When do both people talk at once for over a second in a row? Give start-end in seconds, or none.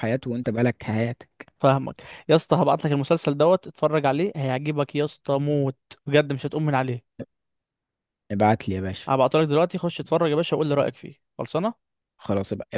none